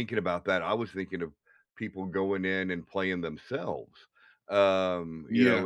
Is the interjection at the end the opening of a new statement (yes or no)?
no